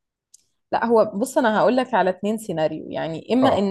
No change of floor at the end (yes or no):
yes